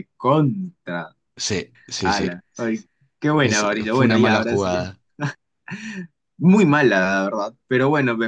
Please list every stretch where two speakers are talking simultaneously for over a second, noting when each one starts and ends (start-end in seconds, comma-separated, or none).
3.4-4.8